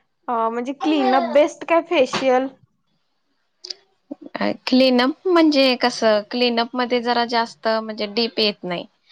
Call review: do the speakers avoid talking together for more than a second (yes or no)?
yes